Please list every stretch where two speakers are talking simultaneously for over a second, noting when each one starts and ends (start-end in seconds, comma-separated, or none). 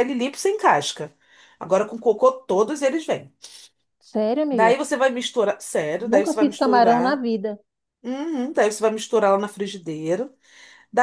6.0-7.2